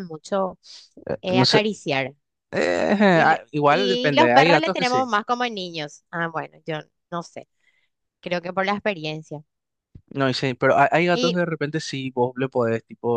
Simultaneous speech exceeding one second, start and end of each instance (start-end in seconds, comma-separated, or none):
3.1-5.1